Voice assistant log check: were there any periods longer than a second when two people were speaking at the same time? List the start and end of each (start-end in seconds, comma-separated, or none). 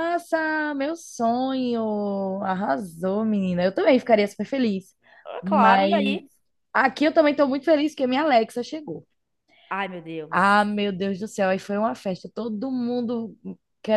none